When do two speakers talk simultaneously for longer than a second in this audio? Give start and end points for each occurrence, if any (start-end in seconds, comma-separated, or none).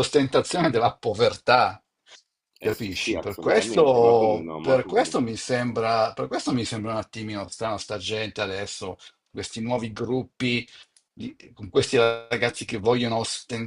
2.6-5.3